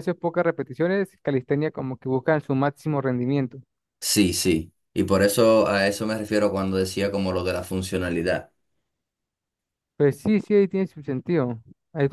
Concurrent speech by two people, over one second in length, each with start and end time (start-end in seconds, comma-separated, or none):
none